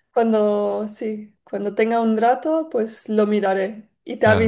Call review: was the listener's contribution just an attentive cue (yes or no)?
no